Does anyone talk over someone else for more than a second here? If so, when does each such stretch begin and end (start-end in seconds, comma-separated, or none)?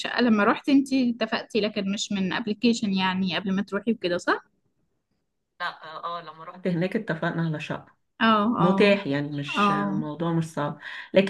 none